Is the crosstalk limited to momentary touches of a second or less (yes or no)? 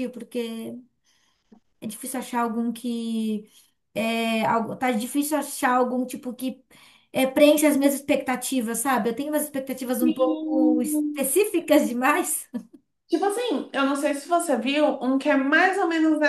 no